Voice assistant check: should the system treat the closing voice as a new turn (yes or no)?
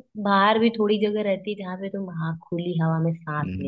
yes